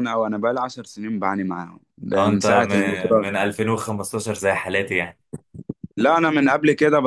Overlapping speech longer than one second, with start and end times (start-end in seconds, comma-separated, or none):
2.1-3.4